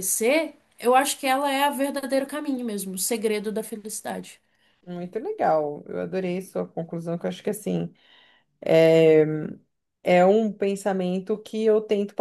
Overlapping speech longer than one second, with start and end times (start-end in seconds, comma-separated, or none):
none